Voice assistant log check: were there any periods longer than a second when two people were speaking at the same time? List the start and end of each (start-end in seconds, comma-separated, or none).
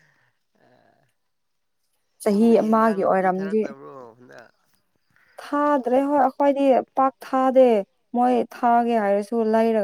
2.3-3.6